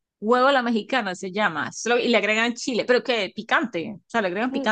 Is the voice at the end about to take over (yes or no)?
yes